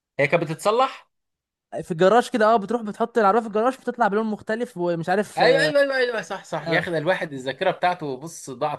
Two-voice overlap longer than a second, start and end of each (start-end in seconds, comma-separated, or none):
none